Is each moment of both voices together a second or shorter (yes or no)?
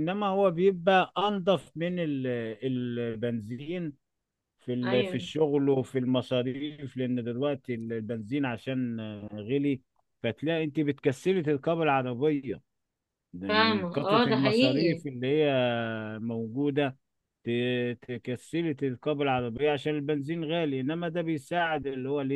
no